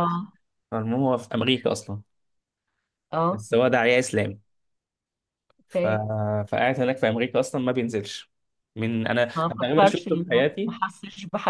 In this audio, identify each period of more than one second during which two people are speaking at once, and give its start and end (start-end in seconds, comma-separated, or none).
9.3-10.7